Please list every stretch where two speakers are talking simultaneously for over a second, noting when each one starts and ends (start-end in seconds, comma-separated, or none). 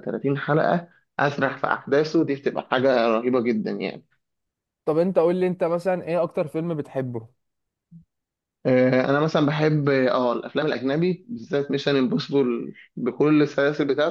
none